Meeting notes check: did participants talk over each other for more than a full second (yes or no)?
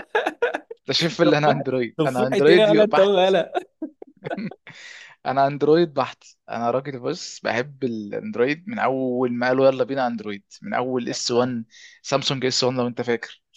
yes